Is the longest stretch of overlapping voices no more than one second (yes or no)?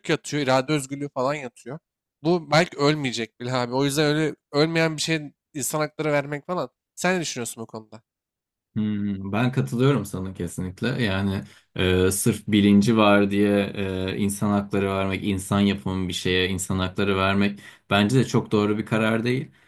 yes